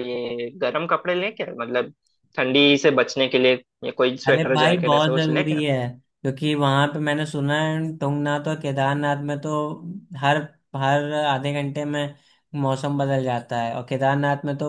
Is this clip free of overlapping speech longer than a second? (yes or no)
no